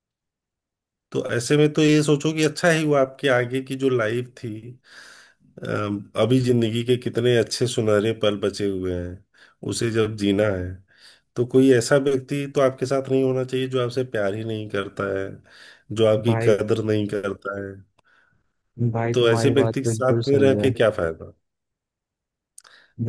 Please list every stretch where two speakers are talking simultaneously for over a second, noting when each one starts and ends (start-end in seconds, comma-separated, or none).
19.1-20.7